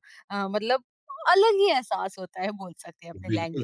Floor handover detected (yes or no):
yes